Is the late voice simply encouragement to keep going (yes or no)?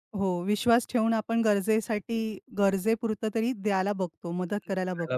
no